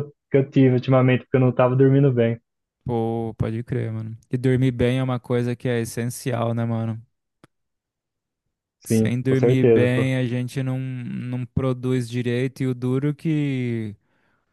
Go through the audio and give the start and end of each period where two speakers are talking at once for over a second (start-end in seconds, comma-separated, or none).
8.8-10.1